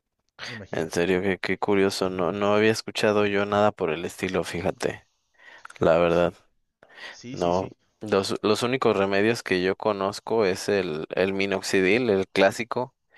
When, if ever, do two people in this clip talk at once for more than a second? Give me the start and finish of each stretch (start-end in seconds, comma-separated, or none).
none